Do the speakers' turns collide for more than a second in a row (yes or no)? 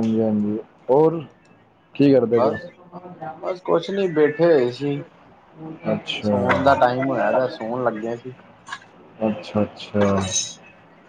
no